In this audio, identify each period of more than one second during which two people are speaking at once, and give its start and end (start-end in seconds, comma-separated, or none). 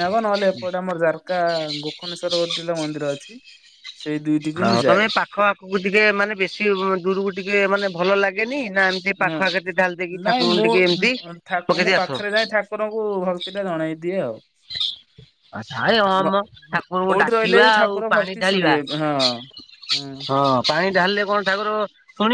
17.1-19.2